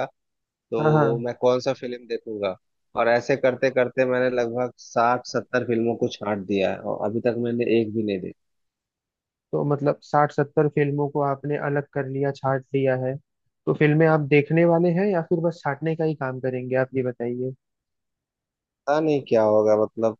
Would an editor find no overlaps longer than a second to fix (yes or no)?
yes